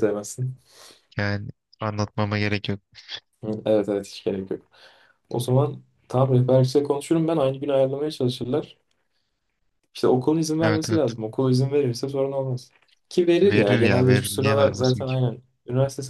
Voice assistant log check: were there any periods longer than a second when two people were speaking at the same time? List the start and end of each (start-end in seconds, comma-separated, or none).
13.4-15.2